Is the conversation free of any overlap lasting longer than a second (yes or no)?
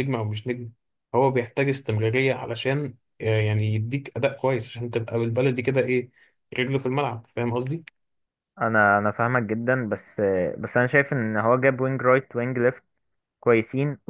yes